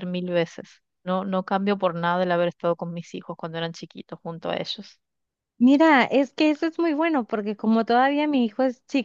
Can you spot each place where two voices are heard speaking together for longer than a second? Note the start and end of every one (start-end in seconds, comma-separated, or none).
none